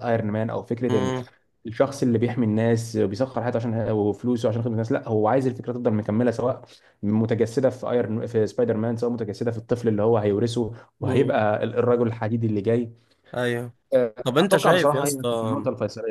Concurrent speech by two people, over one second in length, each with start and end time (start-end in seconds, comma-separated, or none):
14.2-15.6